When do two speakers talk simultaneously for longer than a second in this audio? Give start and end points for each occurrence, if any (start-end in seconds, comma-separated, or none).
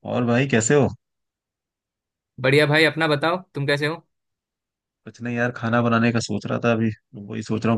none